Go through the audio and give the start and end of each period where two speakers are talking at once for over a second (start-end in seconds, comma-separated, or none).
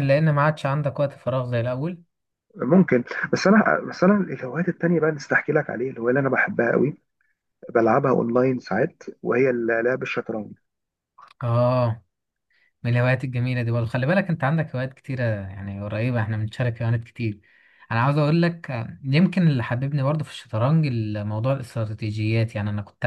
none